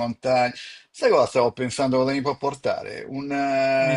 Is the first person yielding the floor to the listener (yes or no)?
no